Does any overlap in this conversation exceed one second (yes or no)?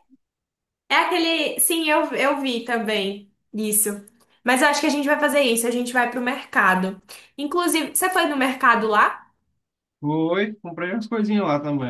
no